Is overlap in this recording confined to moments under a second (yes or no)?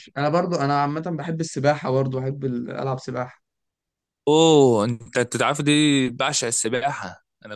yes